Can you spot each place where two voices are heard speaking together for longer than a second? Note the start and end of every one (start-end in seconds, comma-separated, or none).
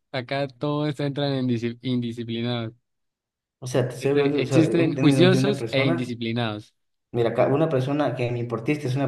4.0-6.1